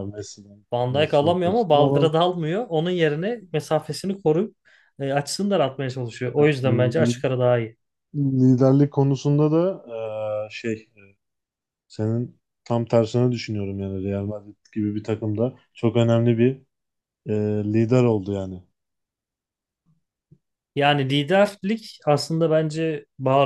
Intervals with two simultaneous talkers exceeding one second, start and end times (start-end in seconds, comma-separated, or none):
0.7-2.1